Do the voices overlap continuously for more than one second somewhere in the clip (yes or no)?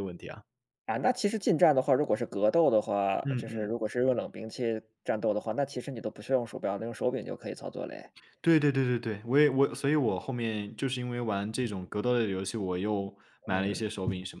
no